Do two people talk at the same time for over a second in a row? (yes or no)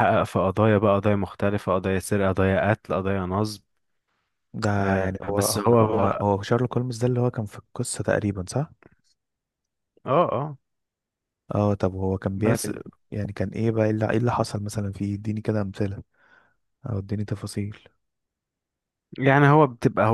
yes